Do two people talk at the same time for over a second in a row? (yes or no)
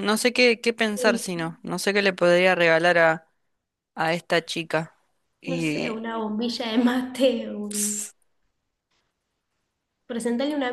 no